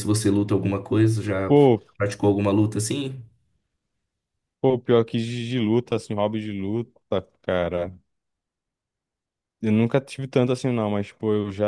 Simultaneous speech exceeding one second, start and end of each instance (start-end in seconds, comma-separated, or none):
none